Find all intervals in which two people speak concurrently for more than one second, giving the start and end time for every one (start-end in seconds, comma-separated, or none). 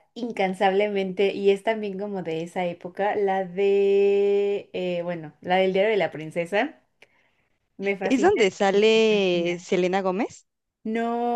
8.0-9.7